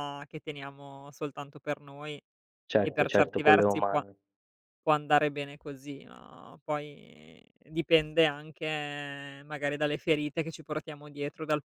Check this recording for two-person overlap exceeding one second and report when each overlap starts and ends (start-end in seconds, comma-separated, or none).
2.8-4.0